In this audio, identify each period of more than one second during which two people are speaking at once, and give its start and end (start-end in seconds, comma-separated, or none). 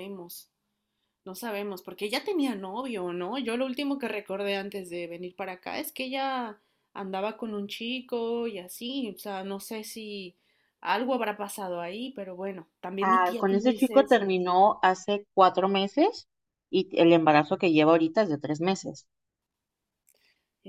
13.0-14.3